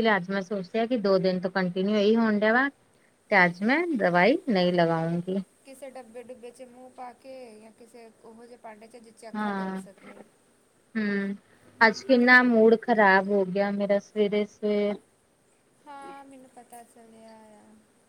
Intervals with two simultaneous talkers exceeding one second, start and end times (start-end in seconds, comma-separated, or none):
none